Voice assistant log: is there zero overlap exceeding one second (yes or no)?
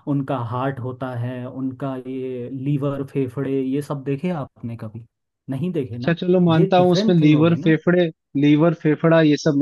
no